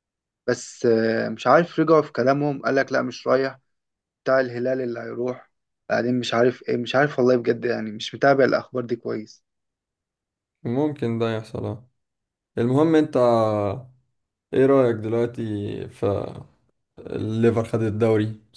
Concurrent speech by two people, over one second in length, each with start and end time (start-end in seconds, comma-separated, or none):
none